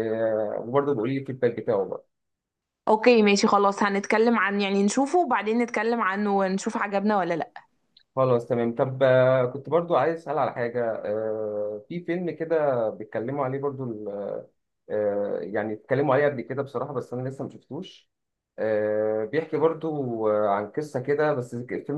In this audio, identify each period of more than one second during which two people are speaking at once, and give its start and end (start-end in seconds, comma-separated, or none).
none